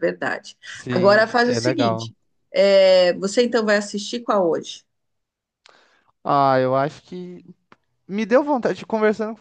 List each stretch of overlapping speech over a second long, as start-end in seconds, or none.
0.6-2.1